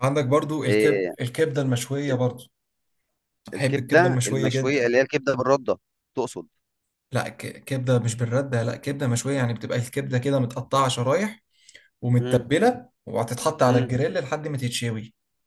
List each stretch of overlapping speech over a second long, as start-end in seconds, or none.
3.6-4.9